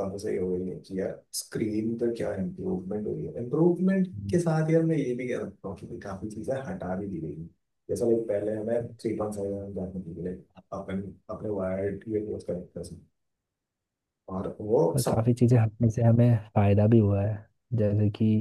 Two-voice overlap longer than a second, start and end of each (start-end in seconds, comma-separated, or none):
none